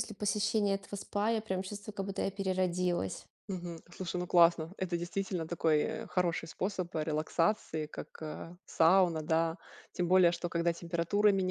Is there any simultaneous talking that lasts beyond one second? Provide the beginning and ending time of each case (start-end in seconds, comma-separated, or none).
none